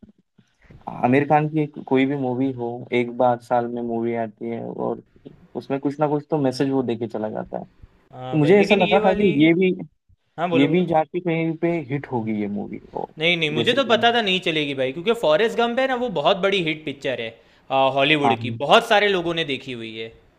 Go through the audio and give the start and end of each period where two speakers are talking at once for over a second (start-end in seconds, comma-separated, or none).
8.1-9.3